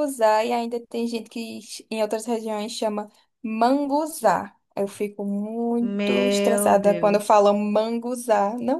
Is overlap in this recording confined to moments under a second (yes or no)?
no